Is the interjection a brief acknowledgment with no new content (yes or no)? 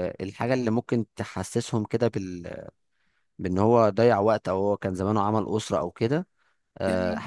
yes